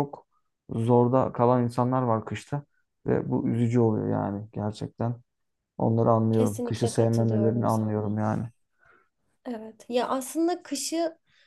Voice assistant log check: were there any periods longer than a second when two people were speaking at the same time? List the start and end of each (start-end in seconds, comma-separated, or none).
6.3-8.2